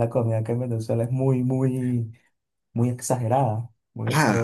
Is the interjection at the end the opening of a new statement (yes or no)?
yes